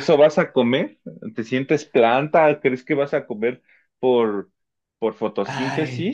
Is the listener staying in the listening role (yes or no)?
no